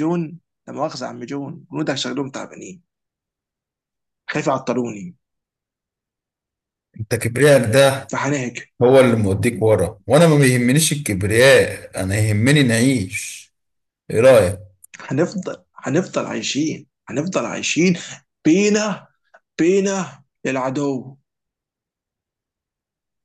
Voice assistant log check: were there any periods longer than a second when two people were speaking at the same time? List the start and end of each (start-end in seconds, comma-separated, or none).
none